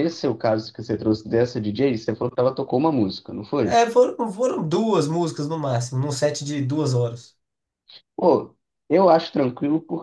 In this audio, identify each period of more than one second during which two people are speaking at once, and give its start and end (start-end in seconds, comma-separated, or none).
none